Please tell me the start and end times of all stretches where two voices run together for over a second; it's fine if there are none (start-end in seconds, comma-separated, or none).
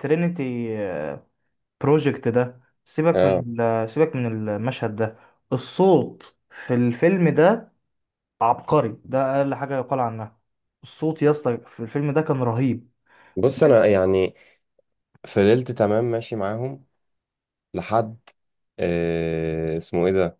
none